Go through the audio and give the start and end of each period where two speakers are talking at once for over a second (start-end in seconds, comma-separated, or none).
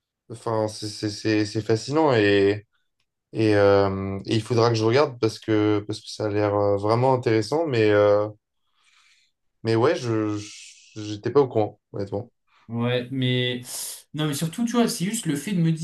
none